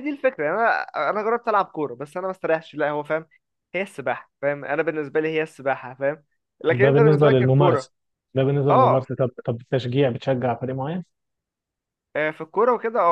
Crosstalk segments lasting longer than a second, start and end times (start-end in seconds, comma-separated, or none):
6.7-7.9